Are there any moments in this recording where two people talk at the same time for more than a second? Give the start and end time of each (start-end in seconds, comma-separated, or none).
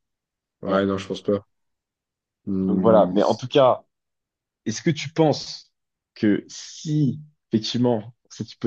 none